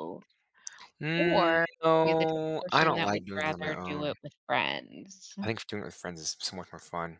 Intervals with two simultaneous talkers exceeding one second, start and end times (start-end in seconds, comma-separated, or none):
1.2-4.1